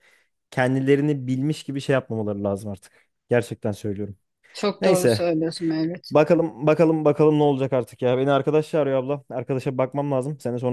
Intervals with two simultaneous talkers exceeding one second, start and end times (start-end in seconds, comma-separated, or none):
none